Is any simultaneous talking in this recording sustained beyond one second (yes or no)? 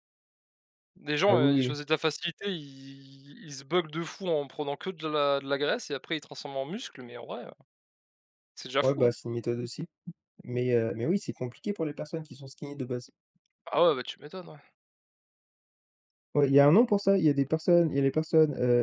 no